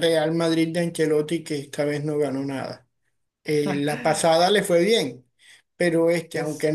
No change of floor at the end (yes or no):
yes